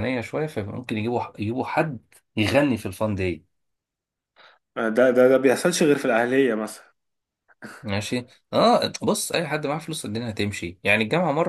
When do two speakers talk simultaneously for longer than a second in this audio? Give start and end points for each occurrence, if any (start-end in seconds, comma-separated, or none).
none